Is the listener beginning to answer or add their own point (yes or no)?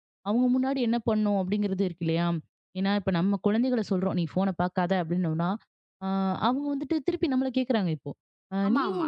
no